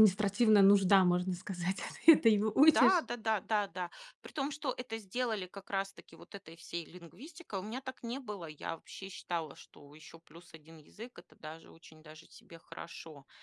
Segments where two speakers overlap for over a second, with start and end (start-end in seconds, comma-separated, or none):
none